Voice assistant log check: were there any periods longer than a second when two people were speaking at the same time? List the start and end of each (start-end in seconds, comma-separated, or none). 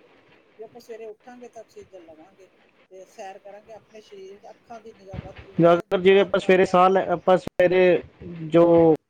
5.6-6.8